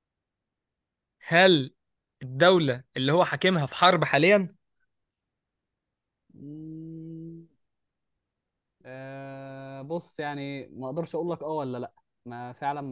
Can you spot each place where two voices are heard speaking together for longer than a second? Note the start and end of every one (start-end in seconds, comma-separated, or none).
none